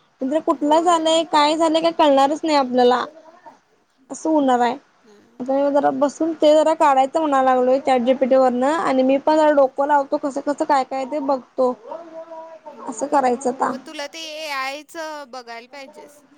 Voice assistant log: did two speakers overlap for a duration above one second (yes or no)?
no